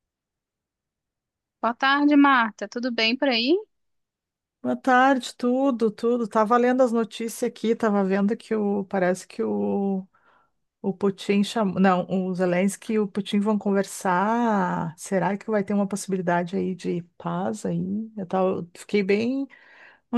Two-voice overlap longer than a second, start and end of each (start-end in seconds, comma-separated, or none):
none